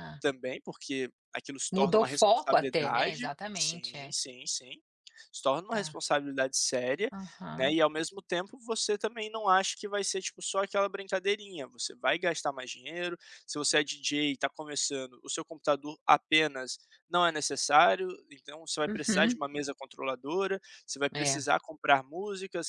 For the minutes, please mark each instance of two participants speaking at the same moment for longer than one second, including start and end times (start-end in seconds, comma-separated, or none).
1.7-4.1